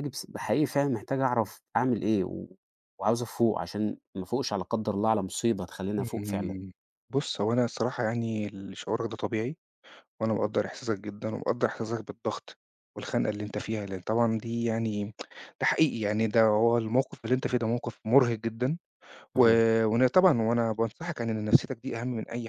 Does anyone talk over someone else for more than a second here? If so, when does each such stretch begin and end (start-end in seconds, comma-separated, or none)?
none